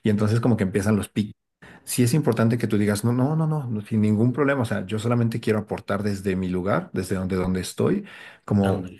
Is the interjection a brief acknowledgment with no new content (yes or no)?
yes